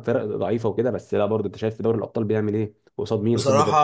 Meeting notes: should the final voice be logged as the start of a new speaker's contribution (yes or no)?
yes